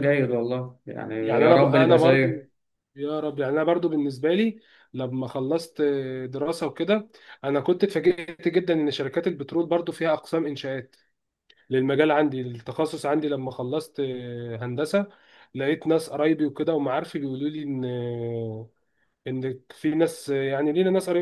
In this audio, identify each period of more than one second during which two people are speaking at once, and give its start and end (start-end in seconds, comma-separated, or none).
1.2-2.5